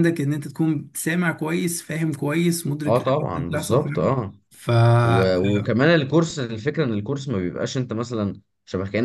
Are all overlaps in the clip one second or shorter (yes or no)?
no